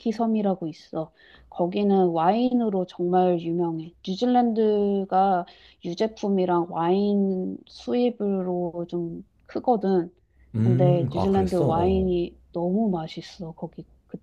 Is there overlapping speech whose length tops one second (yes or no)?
yes